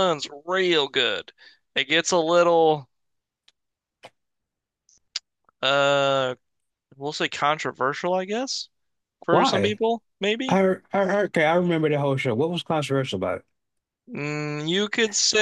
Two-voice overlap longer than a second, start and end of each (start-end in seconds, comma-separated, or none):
none